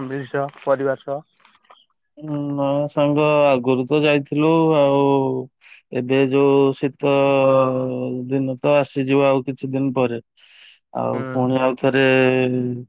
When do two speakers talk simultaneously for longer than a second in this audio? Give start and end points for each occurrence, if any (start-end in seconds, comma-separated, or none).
none